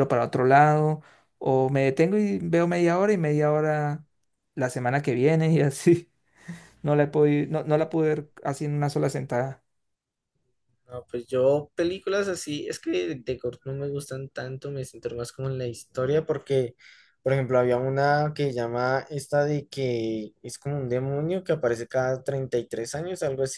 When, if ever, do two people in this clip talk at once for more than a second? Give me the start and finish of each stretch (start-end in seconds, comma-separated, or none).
none